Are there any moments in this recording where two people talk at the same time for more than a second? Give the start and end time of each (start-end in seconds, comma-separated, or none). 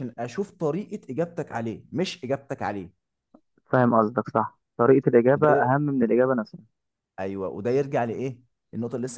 none